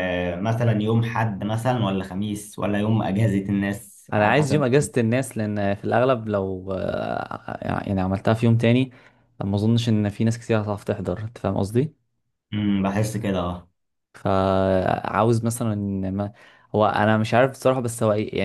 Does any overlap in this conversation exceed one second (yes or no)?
no